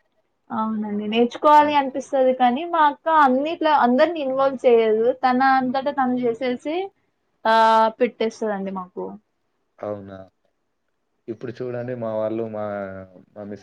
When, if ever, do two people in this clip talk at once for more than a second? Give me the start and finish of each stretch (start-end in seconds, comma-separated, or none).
none